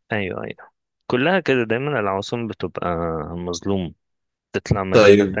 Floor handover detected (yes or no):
no